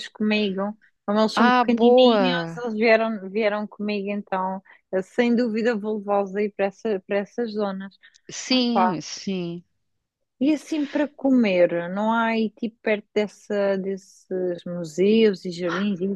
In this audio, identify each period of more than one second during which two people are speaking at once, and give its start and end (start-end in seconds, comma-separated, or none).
1.4-2.6